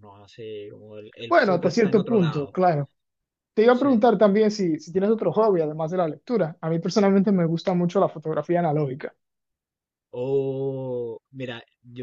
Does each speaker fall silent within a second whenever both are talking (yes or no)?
no